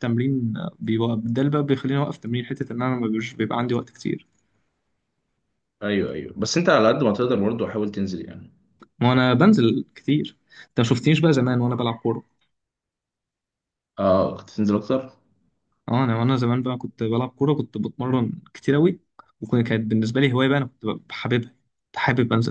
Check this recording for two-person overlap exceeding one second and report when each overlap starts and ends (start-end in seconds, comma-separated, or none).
none